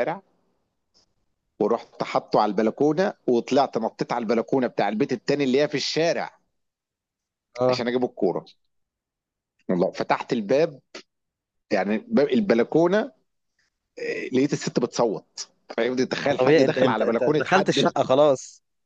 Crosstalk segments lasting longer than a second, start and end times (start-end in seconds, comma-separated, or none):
16.2-17.8